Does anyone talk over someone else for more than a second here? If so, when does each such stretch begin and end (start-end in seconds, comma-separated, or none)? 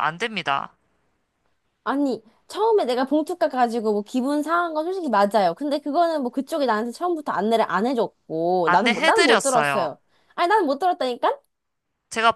8.7-9.9